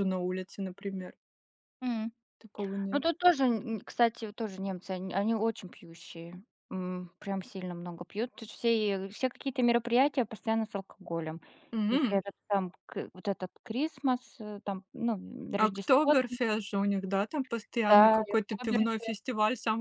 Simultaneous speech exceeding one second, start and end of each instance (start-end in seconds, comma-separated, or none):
17.9-19.2